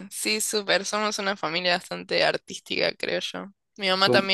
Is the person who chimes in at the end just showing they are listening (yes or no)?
yes